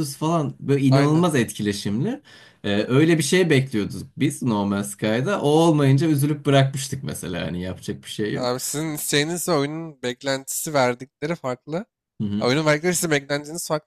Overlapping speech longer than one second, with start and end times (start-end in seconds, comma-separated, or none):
none